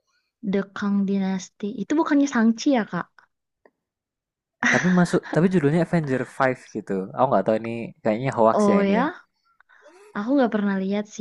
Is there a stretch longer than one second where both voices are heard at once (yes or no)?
no